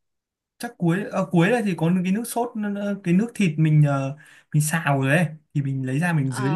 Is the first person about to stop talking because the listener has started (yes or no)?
yes